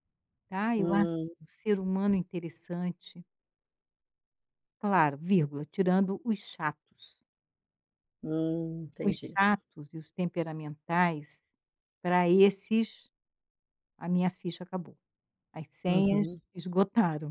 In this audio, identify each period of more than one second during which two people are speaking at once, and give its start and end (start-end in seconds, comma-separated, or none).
none